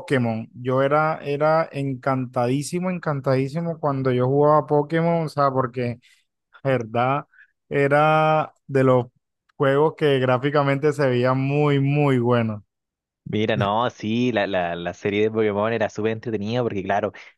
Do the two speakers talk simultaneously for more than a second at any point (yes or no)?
no